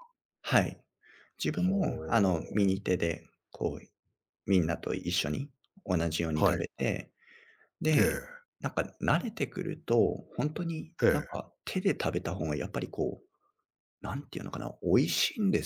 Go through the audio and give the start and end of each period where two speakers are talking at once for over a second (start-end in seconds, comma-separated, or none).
1.5-2.8